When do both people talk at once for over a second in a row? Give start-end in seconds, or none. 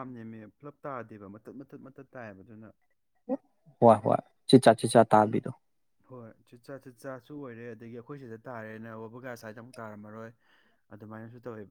none